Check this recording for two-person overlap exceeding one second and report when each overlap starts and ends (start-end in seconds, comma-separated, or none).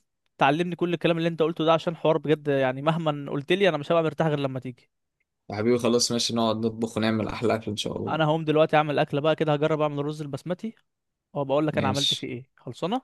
none